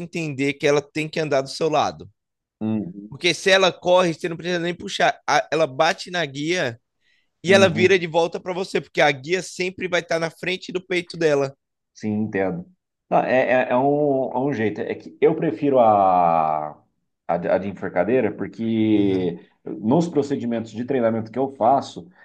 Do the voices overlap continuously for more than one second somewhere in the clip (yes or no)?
no